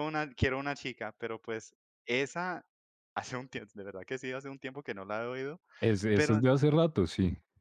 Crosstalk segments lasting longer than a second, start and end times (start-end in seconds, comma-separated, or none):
none